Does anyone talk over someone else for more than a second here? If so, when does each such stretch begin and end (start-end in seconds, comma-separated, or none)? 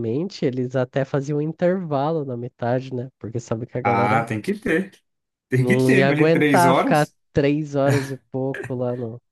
5.6-7.2